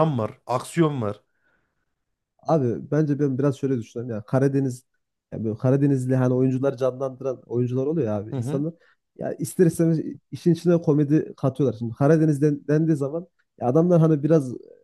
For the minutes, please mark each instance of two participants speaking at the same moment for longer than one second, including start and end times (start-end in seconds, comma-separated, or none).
none